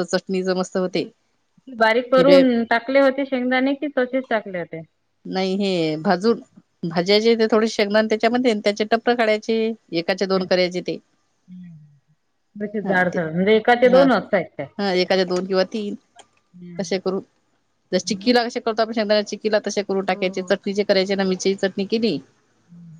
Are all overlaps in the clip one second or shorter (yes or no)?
yes